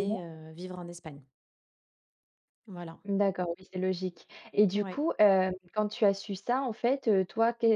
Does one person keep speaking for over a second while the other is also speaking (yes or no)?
no